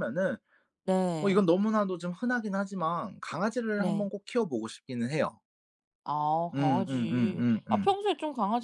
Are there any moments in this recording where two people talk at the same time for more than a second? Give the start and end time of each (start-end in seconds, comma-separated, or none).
6.5-7.9